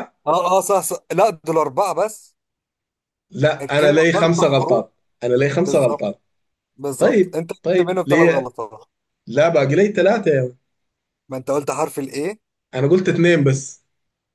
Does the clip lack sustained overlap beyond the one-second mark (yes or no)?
no